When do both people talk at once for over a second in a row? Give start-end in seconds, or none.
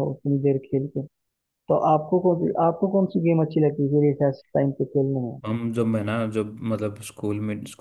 none